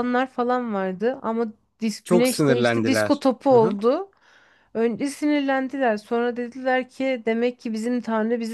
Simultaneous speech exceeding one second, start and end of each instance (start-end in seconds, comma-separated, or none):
2.0-3.8